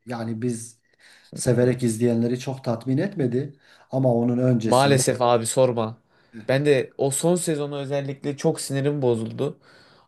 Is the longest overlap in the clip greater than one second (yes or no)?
no